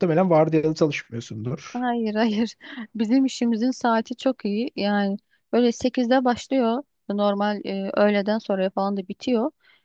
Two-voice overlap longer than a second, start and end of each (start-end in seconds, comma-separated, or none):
none